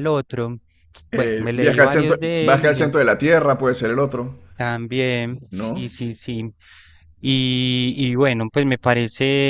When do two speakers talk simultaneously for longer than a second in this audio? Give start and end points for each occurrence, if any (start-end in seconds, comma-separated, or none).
1.1-2.9